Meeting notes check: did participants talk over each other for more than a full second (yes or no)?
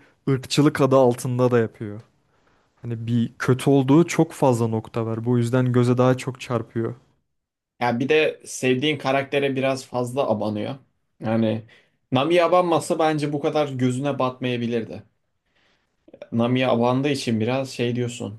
no